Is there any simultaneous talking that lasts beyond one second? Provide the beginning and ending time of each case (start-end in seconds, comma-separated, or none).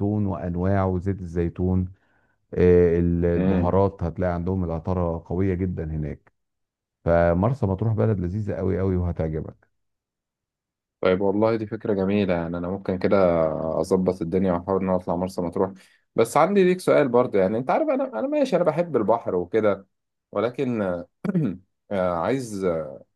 none